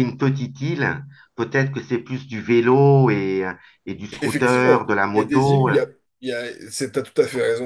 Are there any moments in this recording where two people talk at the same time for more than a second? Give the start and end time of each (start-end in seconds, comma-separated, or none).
4.2-5.8